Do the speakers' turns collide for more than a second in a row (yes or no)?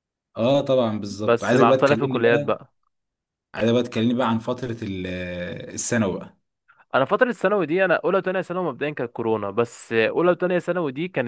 yes